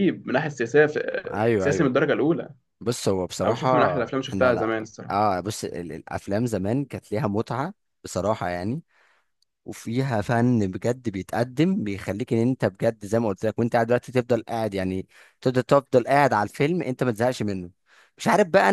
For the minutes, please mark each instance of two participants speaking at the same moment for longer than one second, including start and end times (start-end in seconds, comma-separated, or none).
3.4-5.1